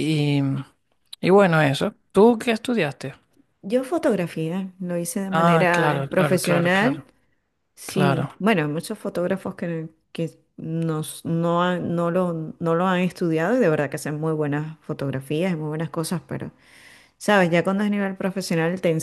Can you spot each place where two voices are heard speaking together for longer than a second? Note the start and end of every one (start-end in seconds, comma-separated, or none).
5.3-7.0